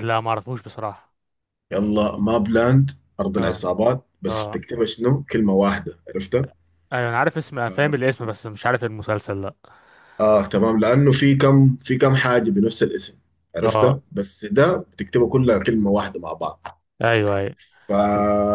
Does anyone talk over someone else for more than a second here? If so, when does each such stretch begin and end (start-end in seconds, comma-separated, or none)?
none